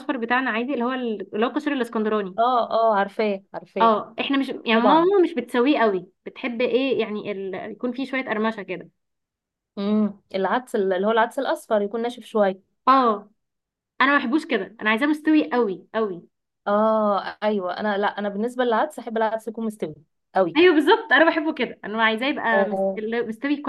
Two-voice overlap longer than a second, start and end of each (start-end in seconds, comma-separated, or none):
none